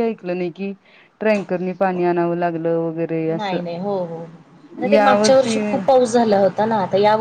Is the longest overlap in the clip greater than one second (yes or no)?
no